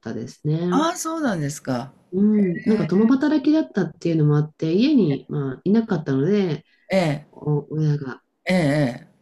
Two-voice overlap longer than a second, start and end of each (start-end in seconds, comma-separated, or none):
none